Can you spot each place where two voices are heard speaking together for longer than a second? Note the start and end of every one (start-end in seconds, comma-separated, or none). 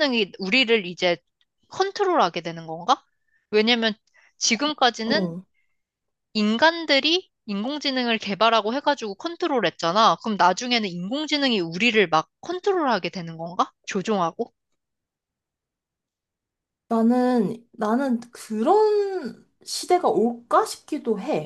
none